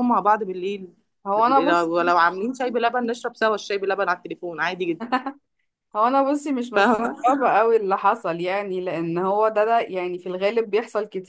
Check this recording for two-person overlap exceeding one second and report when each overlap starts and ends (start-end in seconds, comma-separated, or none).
none